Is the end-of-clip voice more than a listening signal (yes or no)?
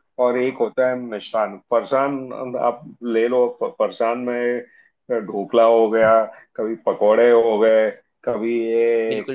no